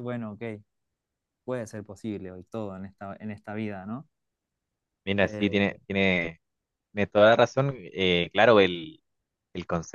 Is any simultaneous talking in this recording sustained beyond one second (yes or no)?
no